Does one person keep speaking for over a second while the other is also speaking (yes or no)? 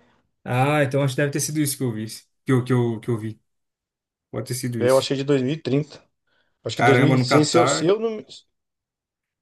yes